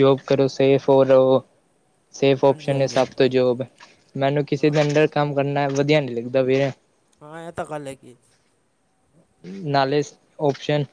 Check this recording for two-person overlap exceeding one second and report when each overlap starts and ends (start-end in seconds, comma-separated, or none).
none